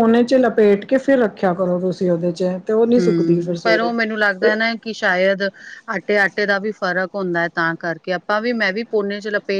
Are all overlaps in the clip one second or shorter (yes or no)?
yes